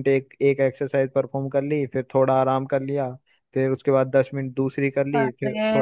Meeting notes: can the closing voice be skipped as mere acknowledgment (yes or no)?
no